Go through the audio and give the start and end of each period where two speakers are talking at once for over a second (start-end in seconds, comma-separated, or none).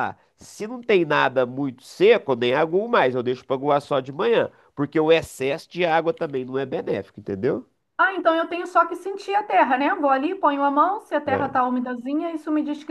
none